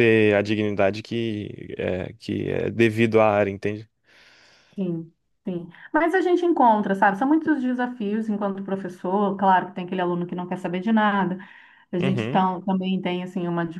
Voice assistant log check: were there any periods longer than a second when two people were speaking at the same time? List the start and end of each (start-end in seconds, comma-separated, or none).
none